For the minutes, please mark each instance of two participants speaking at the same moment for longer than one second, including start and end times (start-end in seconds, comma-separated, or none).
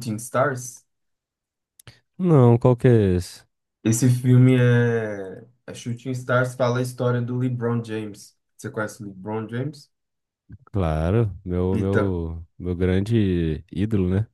none